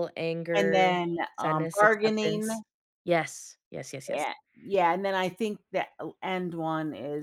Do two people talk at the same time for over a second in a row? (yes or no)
yes